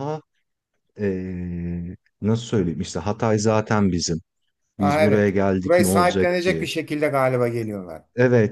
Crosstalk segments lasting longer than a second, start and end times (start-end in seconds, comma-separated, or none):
4.8-6.7